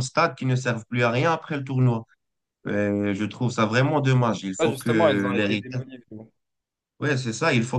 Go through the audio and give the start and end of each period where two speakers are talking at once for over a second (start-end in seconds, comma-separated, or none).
4.6-5.8